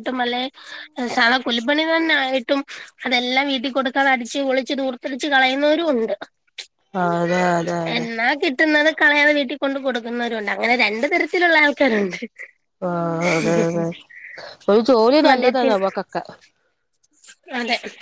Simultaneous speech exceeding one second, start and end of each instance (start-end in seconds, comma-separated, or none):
none